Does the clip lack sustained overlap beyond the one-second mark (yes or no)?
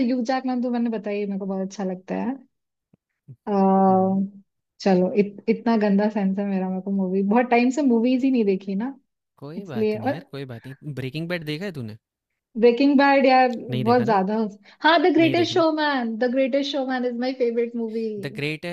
yes